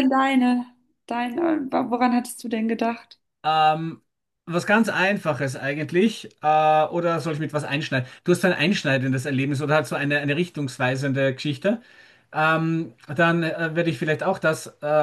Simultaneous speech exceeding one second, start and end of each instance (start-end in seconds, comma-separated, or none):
none